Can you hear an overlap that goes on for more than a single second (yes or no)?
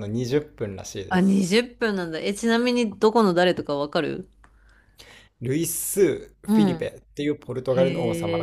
no